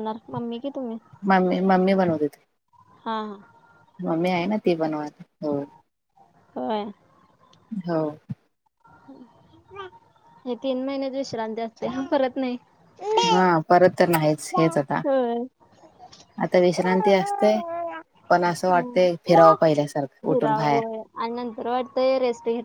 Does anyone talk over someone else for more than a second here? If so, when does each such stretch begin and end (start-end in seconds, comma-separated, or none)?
none